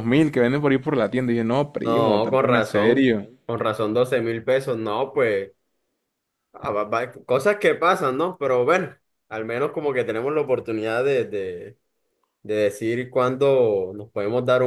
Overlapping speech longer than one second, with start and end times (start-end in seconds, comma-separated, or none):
1.7-3.3